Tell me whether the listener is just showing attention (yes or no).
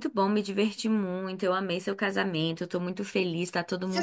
no